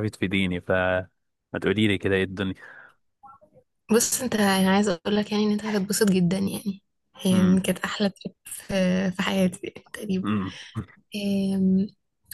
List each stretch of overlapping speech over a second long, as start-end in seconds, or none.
none